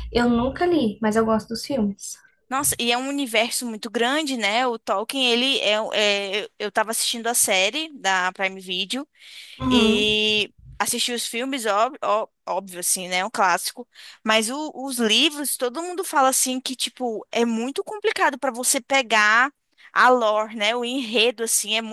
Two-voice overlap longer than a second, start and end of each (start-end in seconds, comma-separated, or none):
none